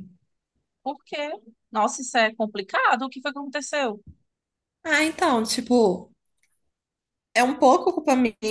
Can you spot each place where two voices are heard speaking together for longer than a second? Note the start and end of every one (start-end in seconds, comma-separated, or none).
none